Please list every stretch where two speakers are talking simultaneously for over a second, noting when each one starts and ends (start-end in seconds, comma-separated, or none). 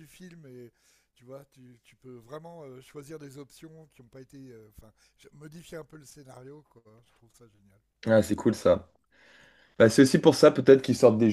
none